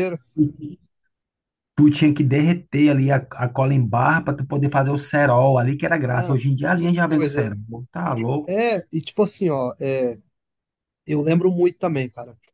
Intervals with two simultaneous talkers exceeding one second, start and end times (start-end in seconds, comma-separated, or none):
6.1-7.6